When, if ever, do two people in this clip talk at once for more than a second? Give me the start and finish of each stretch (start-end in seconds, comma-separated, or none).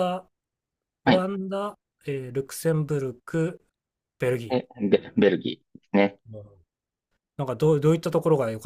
none